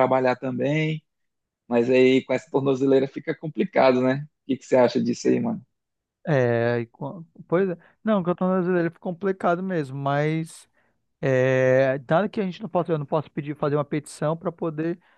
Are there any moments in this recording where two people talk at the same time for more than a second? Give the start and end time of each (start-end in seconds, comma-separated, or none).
none